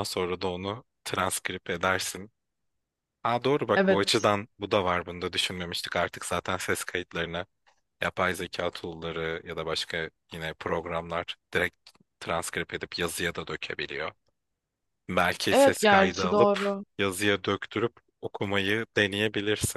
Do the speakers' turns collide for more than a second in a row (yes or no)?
yes